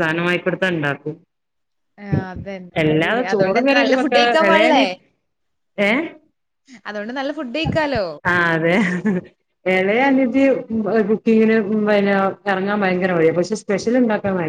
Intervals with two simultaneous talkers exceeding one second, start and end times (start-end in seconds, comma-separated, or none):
2.8-4.8